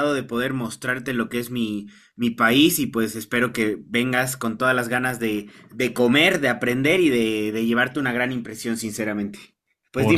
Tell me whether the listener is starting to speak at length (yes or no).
yes